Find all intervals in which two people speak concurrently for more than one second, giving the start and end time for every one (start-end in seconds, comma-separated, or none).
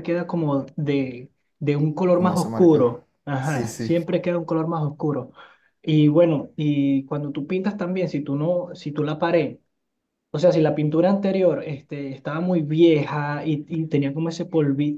2.1-4.1